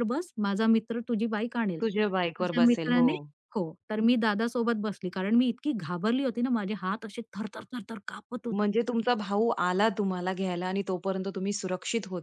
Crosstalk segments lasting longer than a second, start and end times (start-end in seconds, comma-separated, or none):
1.8-3.1